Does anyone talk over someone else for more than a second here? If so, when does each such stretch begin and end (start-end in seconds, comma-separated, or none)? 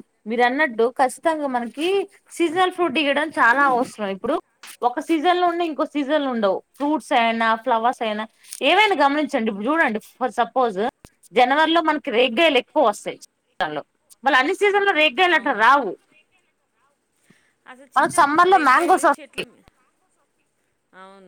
18.0-19.4